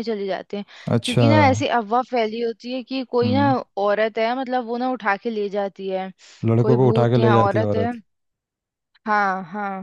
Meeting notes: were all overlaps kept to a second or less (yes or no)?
no